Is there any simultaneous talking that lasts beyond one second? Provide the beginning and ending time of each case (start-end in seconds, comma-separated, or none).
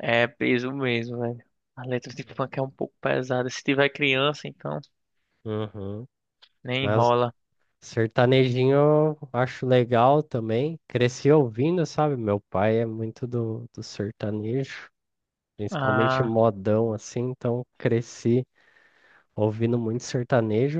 none